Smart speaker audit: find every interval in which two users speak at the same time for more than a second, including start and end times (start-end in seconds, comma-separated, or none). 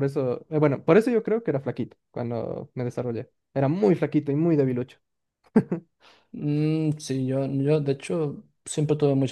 none